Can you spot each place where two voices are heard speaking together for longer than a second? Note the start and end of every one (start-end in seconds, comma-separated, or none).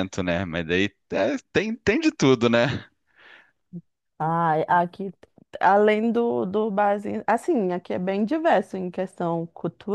none